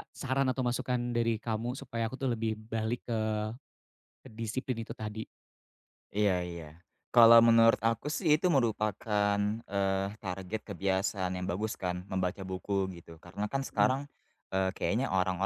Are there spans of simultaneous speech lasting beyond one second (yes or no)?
no